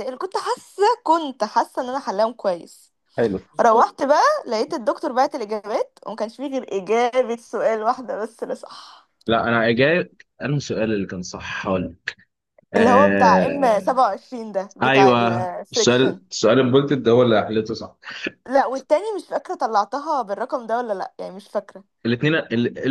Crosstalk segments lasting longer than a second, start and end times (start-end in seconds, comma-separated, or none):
12.8-14.0, 14.8-16.2